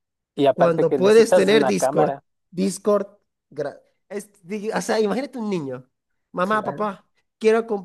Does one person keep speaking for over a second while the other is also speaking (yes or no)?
yes